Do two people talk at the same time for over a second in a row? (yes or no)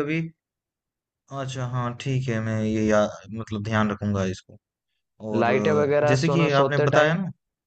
yes